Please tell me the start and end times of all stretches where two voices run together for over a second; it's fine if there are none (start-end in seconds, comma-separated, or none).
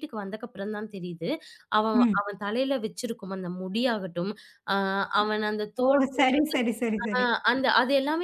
none